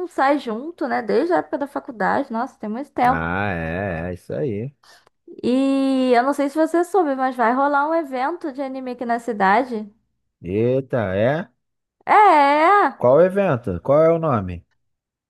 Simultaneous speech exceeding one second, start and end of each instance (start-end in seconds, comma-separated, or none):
none